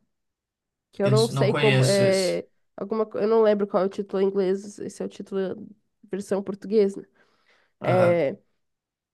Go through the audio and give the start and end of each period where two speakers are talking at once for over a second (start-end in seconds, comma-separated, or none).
1.0-2.4